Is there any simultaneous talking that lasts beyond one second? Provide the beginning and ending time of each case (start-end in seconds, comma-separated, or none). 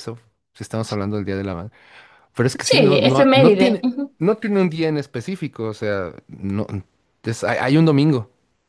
2.6-4.1